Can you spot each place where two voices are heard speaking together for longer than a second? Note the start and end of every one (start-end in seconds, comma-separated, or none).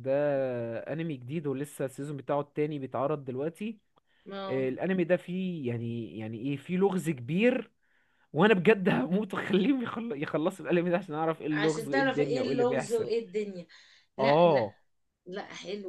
11.5-13.1